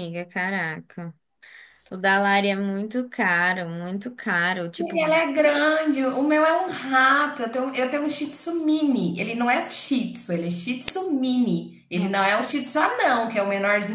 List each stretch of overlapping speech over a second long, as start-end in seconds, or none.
none